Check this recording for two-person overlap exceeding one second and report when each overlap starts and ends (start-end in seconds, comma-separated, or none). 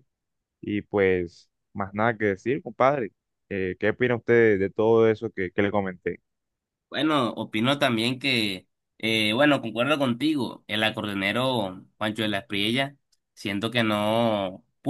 none